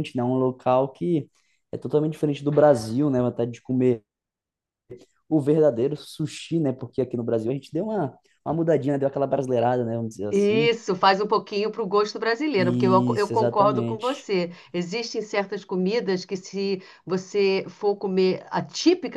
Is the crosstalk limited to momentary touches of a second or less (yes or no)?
no